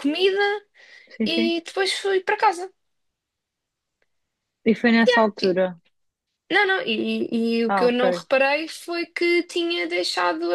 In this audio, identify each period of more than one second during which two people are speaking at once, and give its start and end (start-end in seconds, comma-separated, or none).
none